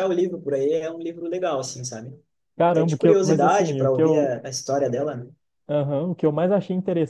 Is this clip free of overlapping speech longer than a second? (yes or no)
no